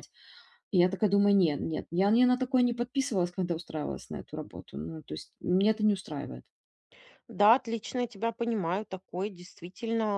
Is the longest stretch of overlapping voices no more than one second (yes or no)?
yes